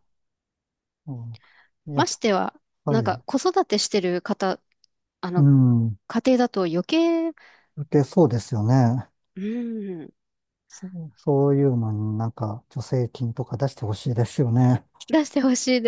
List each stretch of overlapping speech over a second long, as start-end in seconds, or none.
none